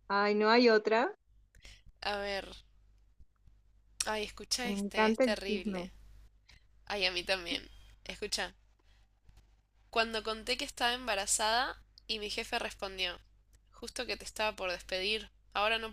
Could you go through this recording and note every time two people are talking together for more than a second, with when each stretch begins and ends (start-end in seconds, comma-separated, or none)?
4.7-5.9